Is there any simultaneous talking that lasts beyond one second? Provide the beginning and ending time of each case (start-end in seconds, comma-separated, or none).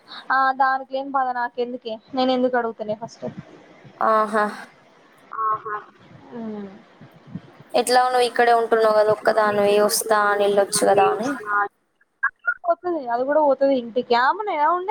9.6-11.3